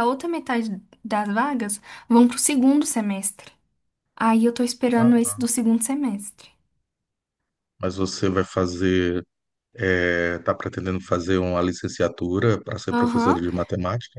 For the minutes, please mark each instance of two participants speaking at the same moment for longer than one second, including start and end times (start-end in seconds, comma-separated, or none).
none